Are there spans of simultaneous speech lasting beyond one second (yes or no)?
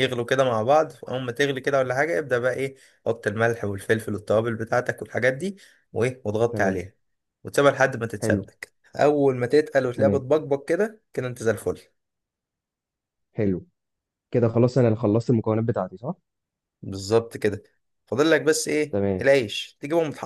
no